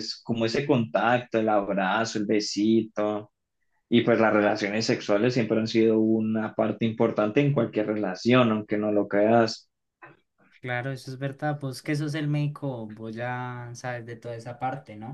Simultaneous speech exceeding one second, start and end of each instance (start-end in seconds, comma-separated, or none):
none